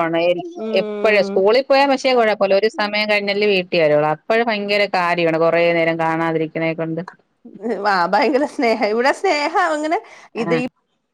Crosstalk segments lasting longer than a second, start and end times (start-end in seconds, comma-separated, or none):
none